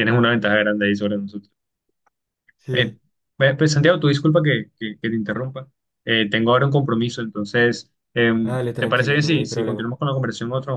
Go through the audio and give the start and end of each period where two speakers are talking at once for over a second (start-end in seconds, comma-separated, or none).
8.4-9.9